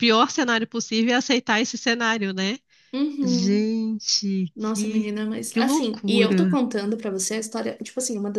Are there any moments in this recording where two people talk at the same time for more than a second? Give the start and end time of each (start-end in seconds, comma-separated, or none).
4.5-6.6